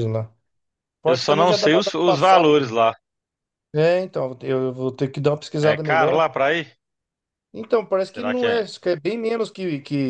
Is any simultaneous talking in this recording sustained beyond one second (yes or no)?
yes